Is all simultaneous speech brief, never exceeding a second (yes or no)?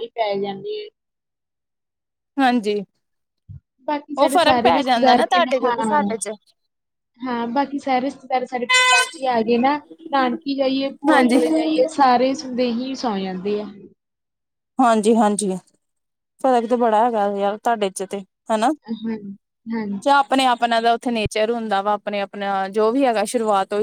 no